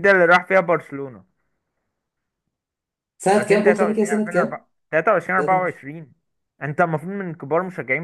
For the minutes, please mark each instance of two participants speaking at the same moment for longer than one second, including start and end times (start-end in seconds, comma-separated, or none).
3.4-4.7